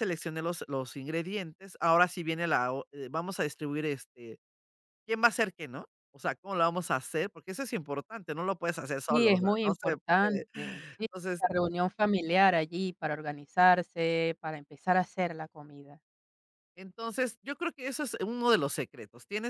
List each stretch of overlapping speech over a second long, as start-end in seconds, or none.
9.1-10.4